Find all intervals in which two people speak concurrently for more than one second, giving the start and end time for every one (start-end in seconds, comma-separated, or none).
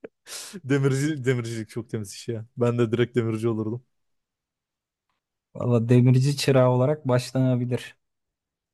none